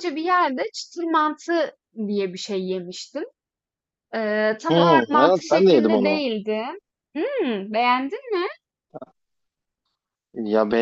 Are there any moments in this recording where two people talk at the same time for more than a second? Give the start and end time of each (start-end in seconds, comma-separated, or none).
4.7-6.2